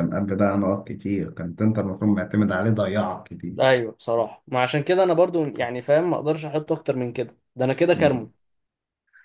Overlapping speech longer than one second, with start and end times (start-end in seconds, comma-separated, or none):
none